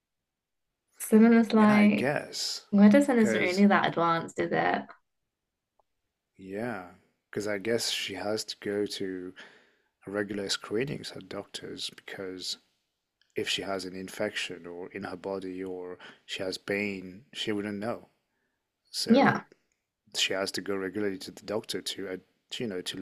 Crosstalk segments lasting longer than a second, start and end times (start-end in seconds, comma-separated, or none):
none